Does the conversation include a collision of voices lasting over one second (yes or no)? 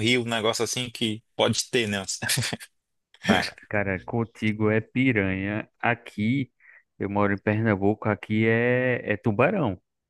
no